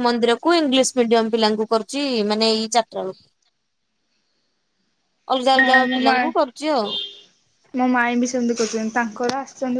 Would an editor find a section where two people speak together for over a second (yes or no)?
no